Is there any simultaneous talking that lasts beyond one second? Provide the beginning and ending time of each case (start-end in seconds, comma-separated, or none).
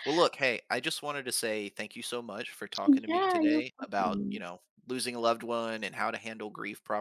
2.8-4.5